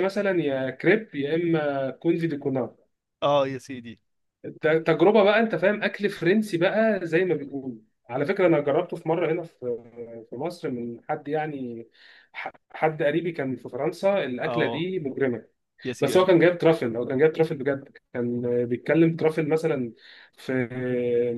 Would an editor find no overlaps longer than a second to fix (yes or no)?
yes